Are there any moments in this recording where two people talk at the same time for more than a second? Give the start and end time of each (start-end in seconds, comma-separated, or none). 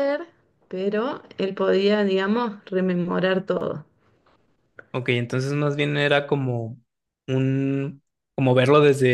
none